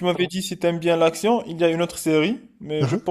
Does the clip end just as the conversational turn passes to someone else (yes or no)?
no